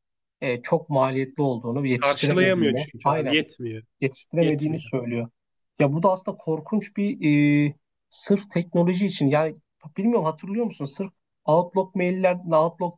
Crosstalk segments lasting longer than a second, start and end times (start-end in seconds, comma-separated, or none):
1.9-3.4